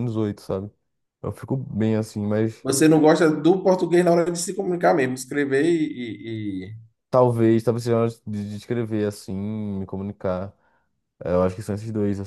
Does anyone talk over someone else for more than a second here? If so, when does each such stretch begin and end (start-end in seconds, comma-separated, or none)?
none